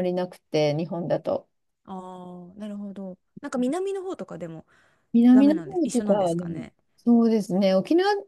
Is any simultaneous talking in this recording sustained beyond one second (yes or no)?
yes